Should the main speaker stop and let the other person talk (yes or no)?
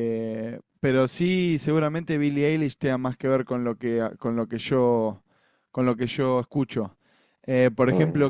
no